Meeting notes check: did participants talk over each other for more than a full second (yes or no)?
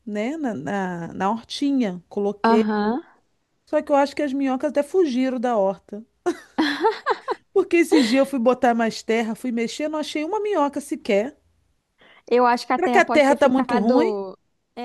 yes